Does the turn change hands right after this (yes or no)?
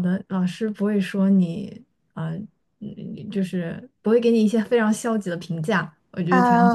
yes